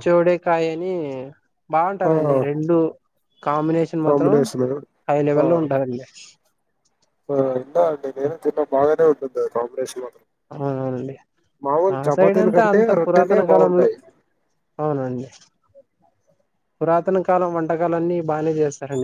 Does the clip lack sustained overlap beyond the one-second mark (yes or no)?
no